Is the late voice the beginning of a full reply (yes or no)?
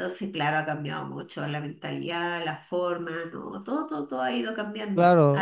yes